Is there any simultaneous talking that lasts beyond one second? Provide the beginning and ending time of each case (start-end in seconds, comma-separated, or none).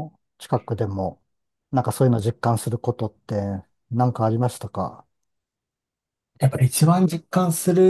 none